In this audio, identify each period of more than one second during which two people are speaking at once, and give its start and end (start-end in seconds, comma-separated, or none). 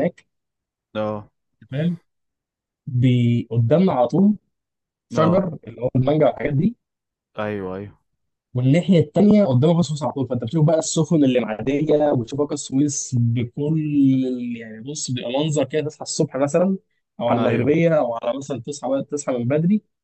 none